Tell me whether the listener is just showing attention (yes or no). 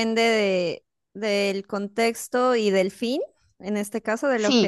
no